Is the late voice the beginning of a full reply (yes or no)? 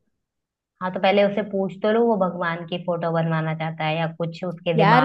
yes